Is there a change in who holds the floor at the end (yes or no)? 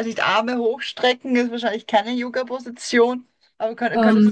no